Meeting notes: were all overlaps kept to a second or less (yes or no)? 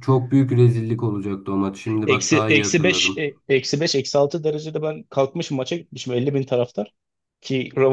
no